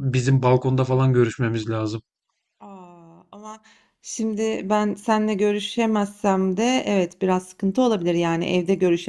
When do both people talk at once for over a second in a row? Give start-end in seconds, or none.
none